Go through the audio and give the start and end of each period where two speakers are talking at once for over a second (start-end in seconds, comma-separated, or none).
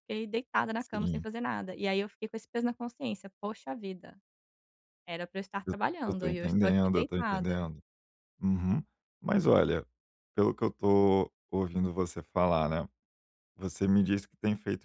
5.7-7.6